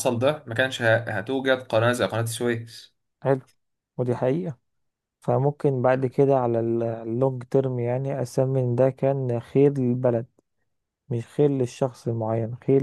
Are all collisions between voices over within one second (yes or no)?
yes